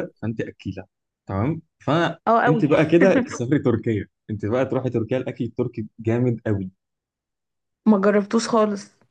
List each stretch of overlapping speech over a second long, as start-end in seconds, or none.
none